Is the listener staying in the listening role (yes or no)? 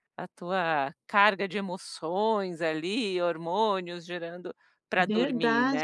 no